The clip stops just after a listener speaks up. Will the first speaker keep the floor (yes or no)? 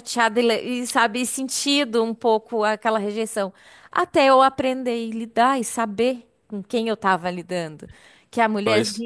yes